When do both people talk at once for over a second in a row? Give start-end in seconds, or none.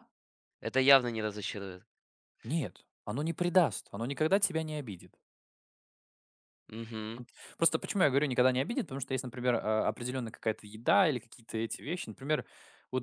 none